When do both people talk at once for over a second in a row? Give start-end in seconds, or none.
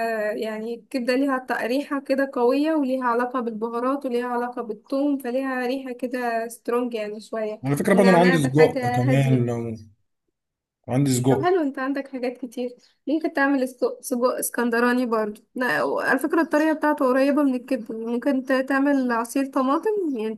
7.7-9.7